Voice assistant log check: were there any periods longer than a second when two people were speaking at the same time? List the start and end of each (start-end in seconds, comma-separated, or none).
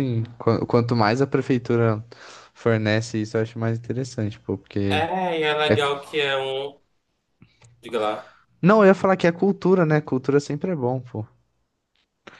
none